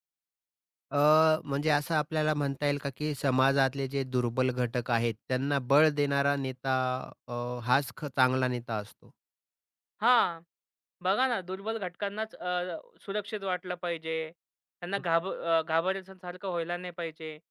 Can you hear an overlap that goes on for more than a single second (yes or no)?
no